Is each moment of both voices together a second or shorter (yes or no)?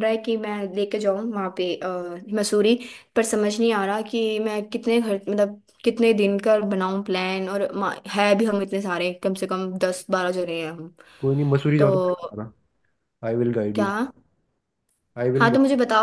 yes